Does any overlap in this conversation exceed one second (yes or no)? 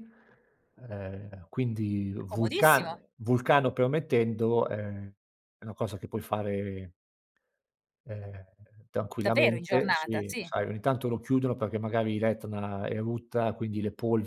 yes